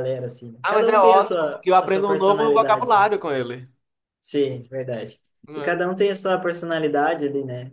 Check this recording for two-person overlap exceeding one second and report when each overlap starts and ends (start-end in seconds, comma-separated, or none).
0.6-3.1